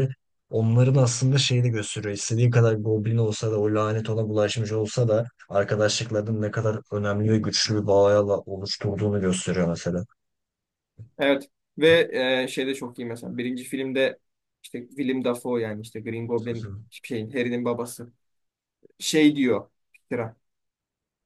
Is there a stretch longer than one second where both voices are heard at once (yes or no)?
no